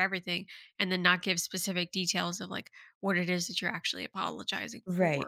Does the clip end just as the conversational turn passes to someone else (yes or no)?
yes